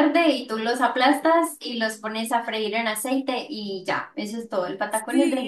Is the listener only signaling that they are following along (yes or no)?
no